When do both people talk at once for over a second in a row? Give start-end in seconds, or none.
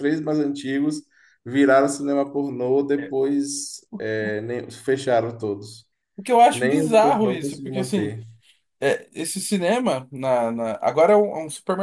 6.5-8.2